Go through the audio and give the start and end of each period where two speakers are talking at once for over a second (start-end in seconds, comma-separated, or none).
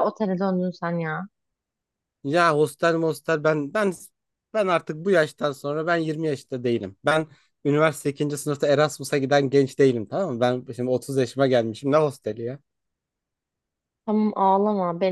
none